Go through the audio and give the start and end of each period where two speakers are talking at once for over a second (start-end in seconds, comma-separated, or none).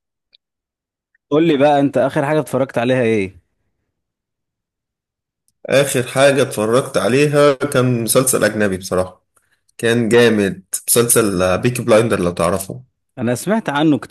none